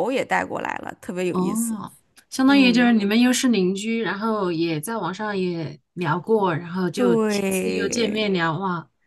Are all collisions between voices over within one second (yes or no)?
no